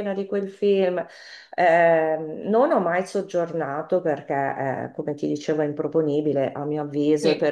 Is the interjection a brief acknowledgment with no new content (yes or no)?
yes